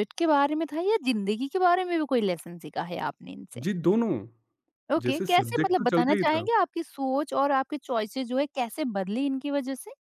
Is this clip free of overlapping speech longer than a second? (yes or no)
no